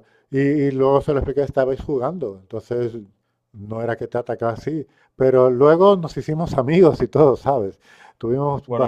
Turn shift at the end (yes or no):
no